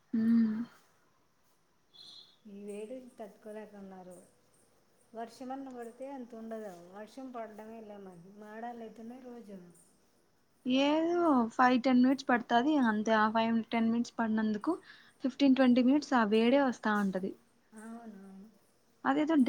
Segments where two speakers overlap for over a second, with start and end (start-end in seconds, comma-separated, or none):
none